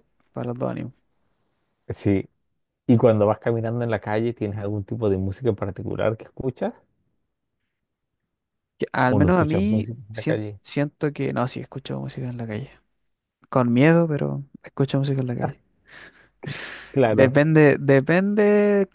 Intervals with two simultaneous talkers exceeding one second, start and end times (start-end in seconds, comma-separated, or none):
9.0-10.6